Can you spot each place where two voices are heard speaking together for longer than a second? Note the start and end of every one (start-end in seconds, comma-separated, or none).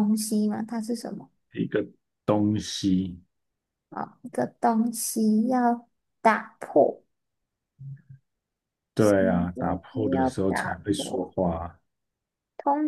9.0-11.3